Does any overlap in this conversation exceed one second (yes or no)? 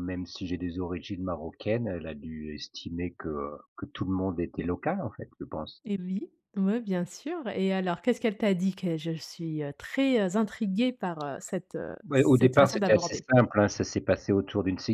yes